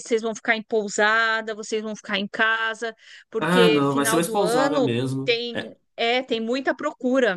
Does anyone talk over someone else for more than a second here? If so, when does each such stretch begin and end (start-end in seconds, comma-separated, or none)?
3.4-5.4